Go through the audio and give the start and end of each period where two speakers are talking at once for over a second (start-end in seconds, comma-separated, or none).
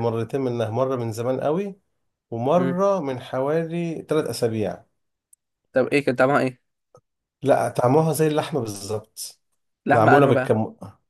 none